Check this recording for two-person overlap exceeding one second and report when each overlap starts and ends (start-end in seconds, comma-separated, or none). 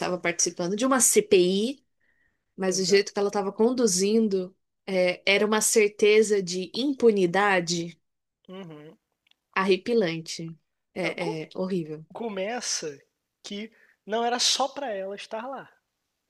none